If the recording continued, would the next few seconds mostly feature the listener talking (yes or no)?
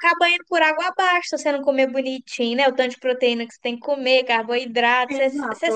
no